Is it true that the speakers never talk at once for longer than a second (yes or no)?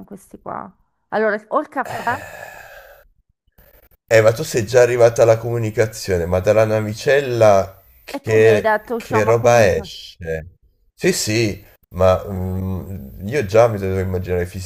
no